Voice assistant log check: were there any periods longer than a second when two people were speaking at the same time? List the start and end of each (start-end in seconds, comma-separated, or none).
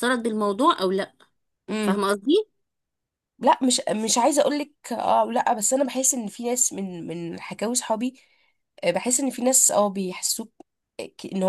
none